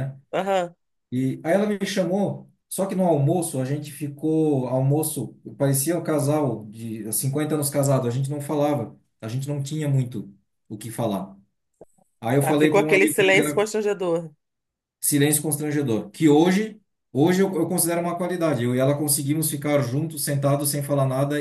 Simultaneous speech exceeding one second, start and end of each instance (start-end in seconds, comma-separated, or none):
12.4-13.7